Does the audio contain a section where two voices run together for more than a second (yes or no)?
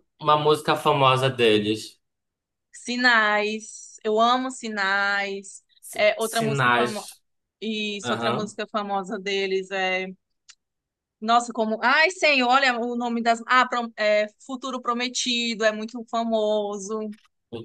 yes